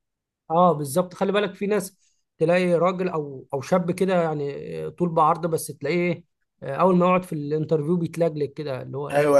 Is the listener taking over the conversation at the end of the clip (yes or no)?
yes